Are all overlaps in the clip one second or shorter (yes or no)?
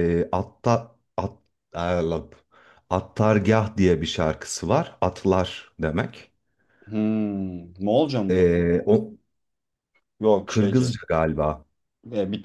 yes